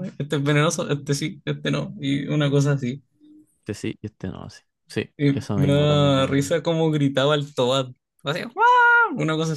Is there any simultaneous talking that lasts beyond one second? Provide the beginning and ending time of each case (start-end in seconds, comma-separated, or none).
5.2-6.5